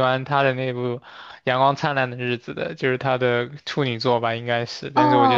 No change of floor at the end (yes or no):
no